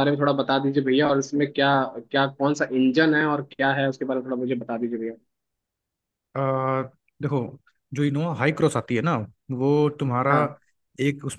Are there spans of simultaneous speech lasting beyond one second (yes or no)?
no